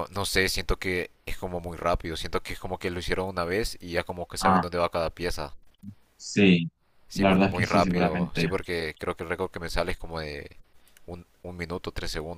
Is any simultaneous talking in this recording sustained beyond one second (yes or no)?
yes